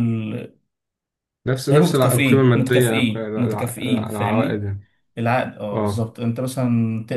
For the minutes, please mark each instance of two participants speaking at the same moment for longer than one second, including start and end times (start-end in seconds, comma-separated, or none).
1.7-4.7